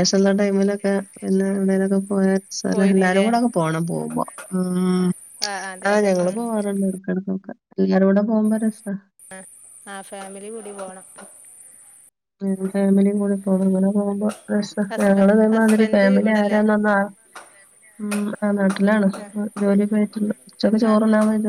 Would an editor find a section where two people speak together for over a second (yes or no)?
yes